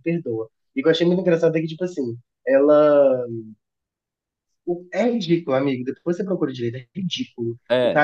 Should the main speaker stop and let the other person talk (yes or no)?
no